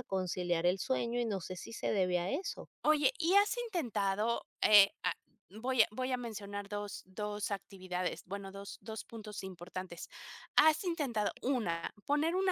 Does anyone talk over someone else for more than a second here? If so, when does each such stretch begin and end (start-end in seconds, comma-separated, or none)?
none